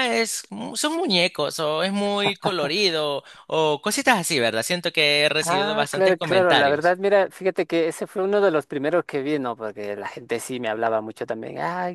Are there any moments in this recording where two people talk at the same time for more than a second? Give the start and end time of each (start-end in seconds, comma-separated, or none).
5.5-7.0